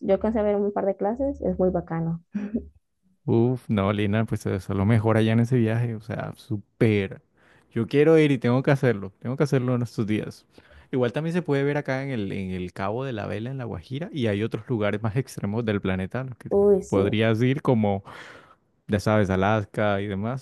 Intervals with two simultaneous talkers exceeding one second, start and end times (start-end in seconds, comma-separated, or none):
none